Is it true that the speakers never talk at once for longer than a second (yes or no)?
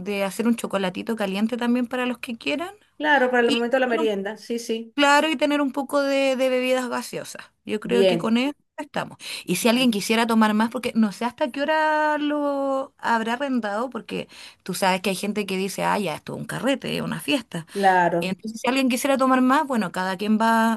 yes